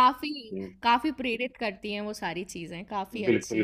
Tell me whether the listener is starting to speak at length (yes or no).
yes